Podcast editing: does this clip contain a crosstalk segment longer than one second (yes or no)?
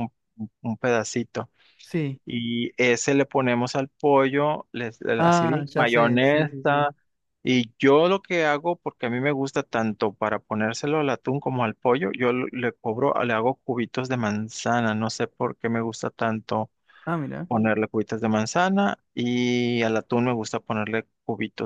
yes